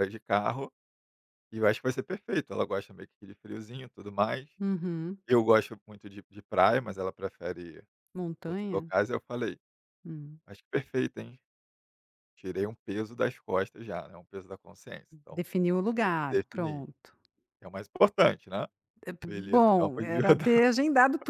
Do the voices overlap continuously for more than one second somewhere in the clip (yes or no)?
yes